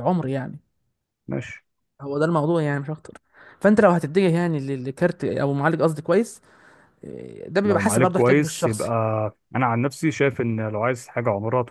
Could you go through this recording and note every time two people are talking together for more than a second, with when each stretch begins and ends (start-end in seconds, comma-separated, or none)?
7.6-8.9